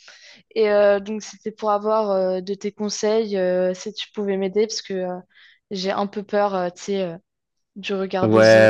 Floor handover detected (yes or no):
yes